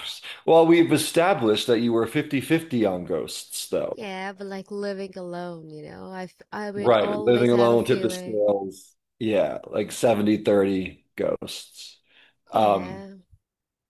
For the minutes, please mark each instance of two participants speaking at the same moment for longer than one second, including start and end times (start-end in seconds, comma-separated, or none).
6.8-8.4